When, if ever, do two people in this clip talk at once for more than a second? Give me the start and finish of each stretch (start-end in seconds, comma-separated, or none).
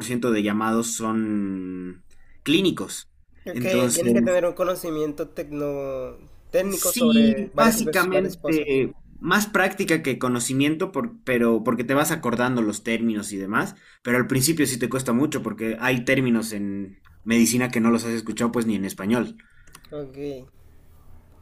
6.7-8.7